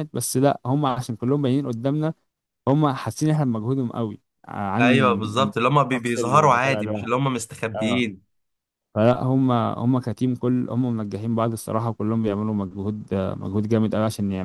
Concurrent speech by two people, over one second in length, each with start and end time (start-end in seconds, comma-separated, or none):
4.8-7.1